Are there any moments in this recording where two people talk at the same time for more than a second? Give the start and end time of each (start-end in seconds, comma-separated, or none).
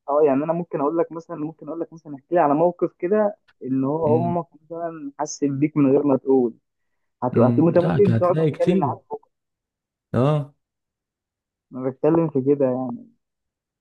7.3-8.9